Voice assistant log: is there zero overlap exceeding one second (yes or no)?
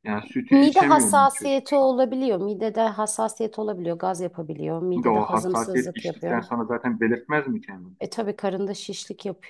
no